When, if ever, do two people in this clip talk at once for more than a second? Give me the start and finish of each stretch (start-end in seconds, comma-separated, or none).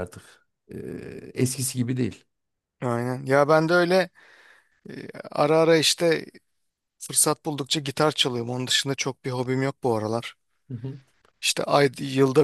none